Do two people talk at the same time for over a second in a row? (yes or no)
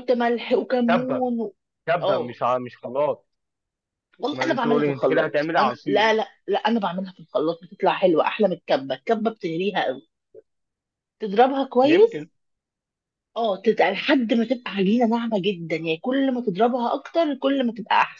yes